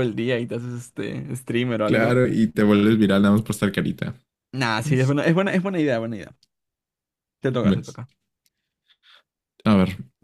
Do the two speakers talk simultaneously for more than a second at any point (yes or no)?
no